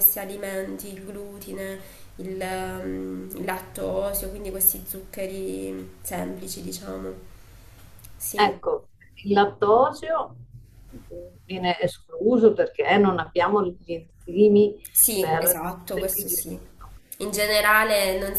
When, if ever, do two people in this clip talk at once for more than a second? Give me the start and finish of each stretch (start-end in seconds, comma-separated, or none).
15.2-16.6